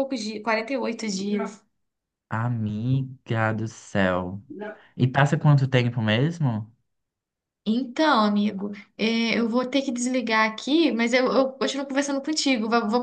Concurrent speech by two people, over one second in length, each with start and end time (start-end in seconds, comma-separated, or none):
none